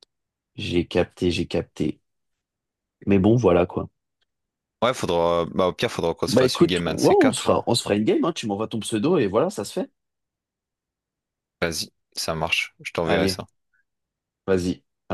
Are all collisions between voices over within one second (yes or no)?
no